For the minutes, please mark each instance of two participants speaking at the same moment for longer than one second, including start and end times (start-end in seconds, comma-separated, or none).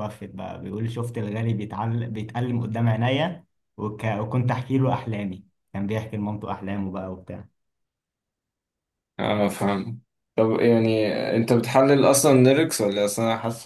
none